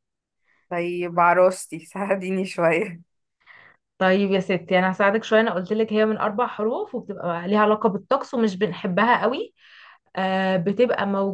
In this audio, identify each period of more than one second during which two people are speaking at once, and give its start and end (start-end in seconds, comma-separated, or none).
none